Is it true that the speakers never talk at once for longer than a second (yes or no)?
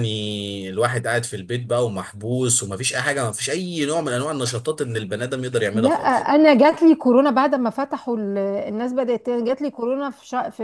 yes